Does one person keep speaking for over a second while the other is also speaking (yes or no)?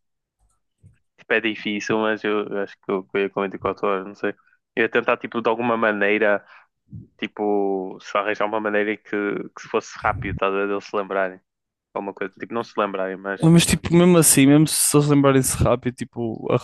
no